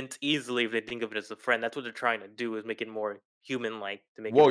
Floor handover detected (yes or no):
yes